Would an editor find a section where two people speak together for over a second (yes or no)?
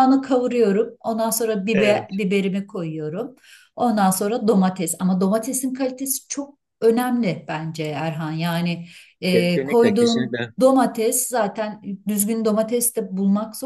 yes